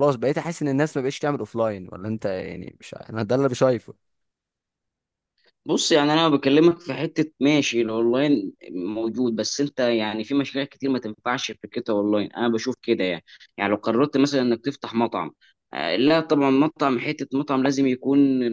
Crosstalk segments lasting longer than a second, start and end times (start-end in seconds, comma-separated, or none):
none